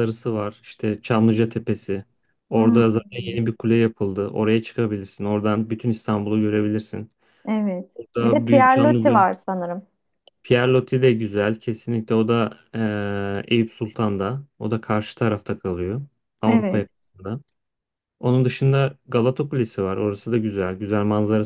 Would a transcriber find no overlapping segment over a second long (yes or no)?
no